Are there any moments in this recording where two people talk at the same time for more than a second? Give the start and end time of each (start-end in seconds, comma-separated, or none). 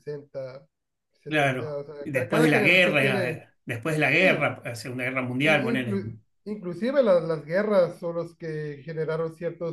1.3-3.5